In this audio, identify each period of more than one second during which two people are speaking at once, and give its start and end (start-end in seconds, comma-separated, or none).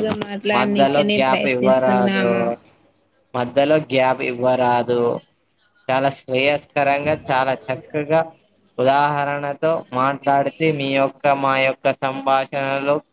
0.6-2.3